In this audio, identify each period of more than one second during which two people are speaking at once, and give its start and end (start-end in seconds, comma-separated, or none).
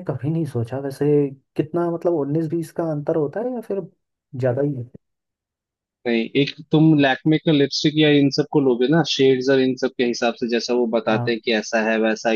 none